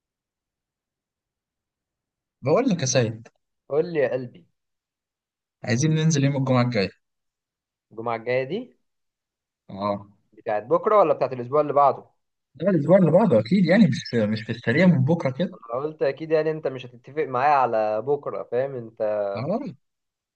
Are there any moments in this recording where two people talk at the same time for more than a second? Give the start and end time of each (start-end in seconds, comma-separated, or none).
none